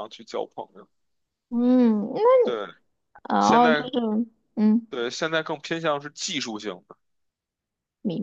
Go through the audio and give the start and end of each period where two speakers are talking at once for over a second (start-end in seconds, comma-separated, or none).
none